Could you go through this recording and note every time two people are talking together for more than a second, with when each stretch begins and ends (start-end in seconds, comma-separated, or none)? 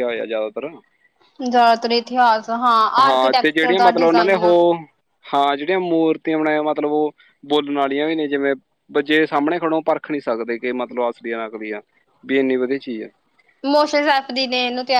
3.0-4.5